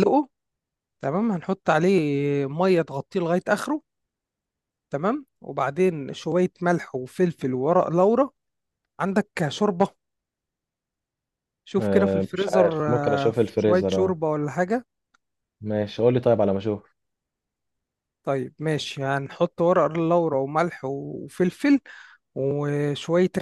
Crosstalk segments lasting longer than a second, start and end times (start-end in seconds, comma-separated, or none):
11.8-14.2